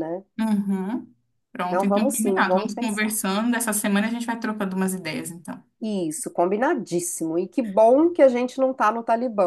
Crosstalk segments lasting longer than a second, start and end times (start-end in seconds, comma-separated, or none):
1.7-3.1